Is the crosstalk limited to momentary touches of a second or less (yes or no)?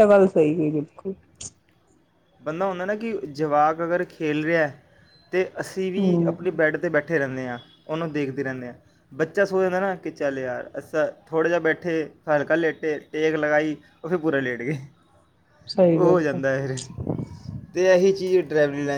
yes